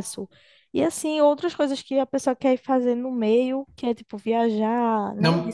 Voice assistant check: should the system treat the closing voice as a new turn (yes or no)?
yes